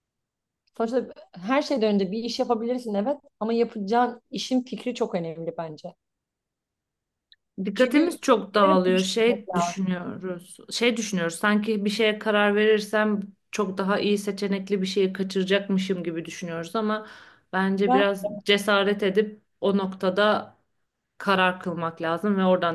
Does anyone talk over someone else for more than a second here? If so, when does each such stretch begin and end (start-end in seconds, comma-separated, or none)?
7.8-9.9